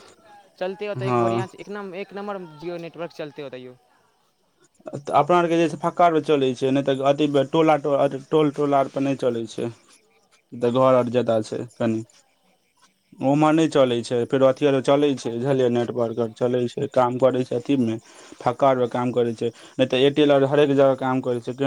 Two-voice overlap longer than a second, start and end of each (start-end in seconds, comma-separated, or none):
none